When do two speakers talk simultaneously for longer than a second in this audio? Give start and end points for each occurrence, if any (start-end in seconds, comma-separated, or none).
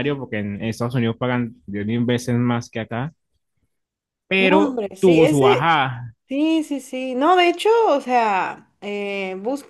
4.3-5.7